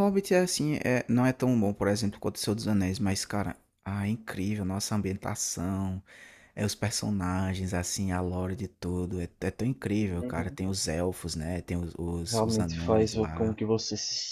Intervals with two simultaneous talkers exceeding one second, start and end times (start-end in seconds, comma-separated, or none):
12.2-13.6